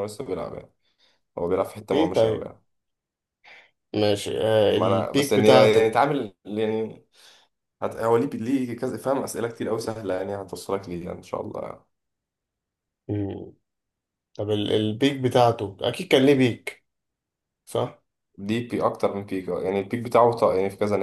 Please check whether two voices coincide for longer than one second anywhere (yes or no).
yes